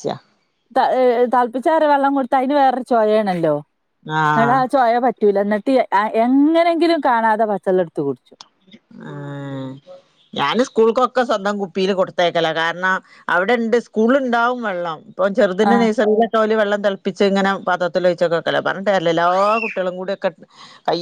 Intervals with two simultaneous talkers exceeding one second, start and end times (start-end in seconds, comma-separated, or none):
none